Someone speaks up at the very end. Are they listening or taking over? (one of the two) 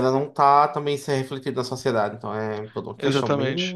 taking over